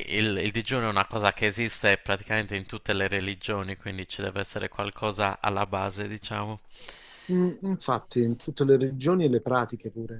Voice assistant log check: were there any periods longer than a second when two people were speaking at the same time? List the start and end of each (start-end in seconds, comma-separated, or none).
none